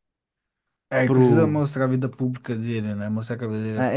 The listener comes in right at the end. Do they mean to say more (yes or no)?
yes